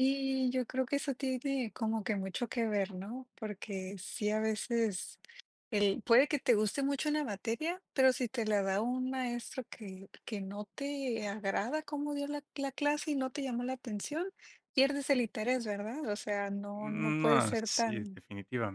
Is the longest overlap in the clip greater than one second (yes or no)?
yes